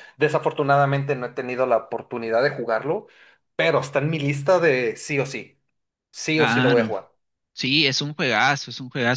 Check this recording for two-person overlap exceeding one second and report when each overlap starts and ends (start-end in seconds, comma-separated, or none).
none